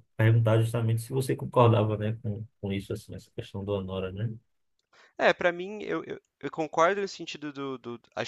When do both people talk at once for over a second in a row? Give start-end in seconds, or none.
none